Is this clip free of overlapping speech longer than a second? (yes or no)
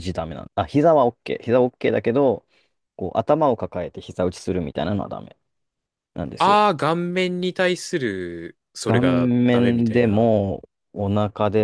no